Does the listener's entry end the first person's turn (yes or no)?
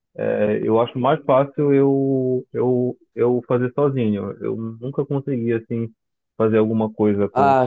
yes